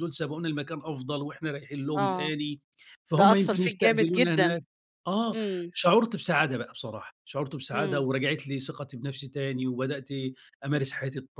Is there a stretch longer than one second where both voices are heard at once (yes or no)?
yes